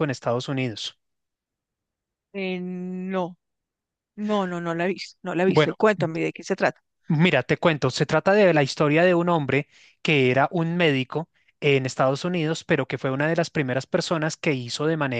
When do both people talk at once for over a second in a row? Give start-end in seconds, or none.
none